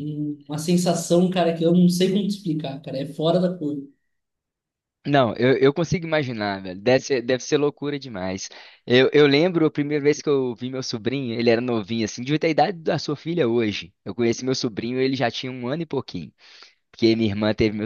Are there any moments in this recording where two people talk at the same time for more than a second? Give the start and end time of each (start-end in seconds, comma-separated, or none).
none